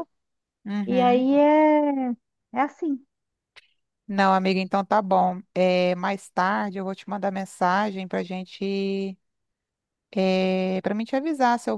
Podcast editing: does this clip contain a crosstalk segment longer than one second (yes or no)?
no